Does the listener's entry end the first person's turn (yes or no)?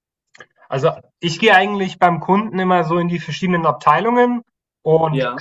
no